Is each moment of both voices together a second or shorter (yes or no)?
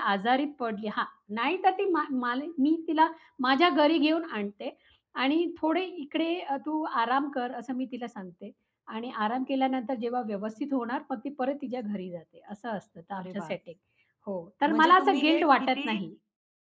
no